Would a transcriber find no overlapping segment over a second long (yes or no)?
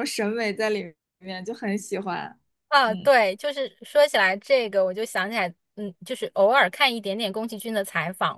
yes